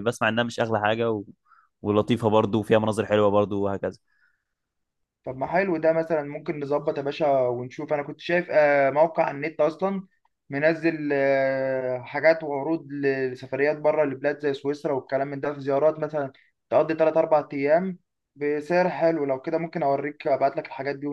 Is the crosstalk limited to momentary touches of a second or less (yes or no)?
yes